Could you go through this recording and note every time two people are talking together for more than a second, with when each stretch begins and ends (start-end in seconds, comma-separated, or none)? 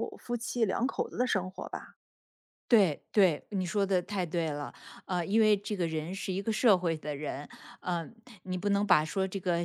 none